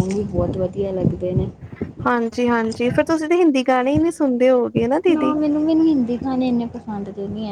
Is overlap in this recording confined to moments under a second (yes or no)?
yes